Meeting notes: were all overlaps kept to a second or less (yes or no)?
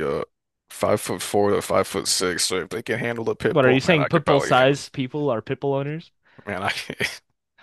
no